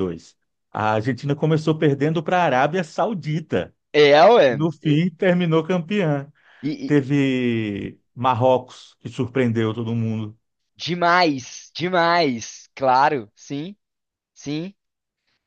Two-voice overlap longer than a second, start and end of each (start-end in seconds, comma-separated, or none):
none